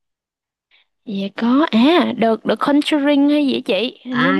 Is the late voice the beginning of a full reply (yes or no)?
yes